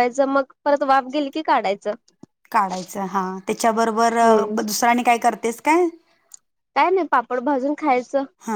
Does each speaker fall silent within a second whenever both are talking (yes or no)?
yes